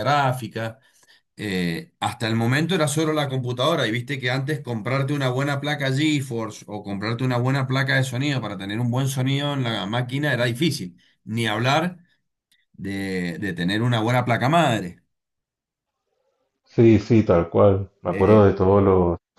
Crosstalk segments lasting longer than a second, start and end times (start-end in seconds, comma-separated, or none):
none